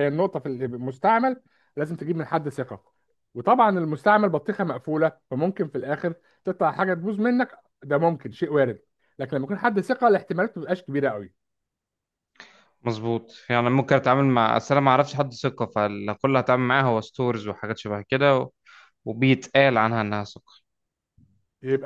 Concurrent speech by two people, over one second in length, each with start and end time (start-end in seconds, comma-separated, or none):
none